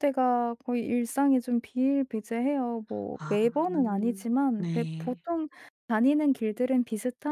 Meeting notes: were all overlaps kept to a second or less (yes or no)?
no